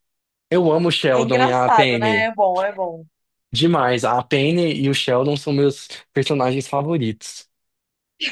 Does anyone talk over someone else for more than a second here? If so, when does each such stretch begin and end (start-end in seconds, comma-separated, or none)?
1.1-2.3